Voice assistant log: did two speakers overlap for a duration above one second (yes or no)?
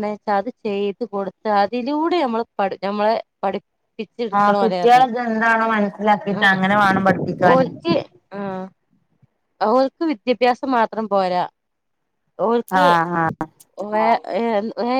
no